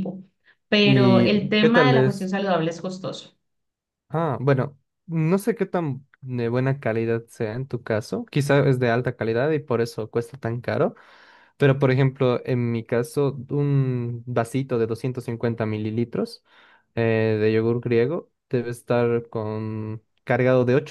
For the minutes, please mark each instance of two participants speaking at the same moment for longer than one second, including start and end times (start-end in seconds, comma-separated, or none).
0.8-2.3